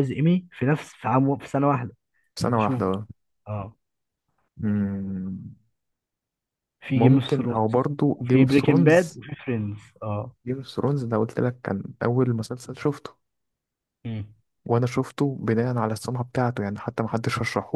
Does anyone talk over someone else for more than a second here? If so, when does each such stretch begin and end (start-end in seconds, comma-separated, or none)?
7.0-9.2